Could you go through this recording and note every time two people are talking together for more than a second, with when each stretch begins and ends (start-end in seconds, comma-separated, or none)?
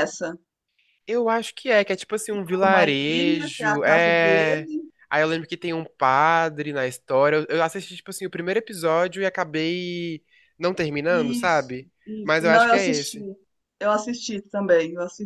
2.6-4.7, 11.1-13.2